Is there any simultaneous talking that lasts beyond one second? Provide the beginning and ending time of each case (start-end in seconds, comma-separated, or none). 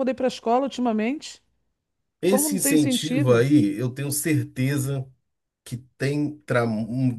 2.2-3.5